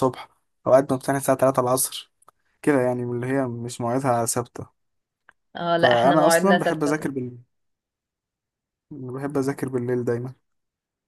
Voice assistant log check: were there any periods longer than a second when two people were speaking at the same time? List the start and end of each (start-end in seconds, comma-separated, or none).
5.8-7.1